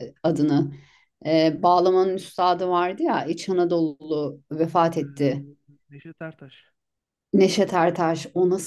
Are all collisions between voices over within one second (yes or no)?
yes